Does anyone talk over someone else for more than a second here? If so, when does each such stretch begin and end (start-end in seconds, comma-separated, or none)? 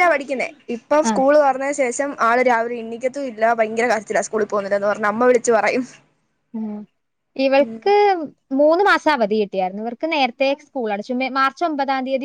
none